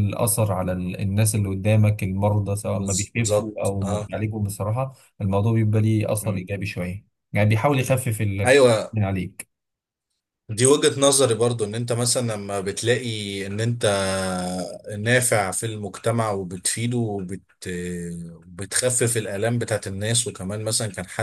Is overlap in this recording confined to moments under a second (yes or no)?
no